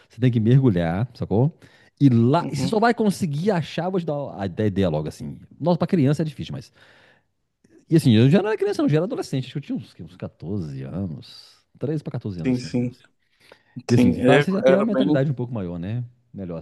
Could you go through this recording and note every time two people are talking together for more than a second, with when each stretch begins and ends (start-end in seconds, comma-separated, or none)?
13.9-15.2